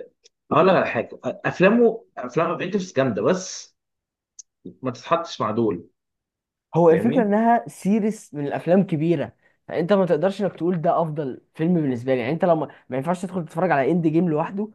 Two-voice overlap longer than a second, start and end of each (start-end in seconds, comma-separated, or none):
none